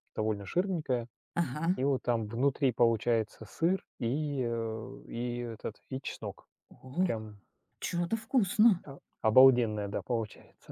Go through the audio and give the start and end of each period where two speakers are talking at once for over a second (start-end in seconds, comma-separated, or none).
none